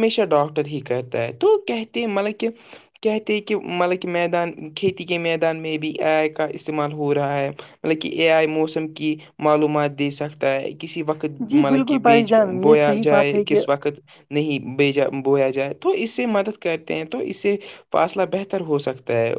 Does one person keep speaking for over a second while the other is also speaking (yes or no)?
yes